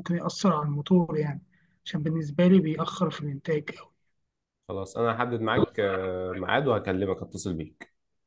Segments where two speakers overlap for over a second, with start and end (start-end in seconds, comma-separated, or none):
none